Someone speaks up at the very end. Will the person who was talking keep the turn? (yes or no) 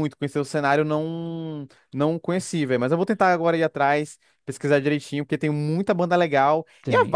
yes